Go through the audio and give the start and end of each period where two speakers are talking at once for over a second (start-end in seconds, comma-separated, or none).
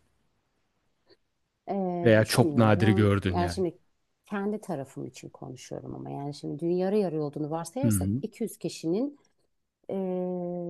2.0-3.6